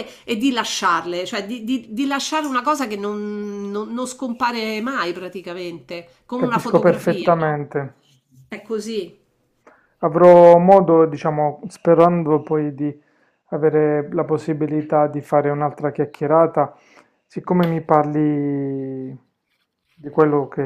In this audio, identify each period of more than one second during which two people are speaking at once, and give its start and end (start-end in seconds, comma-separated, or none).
6.3-7.6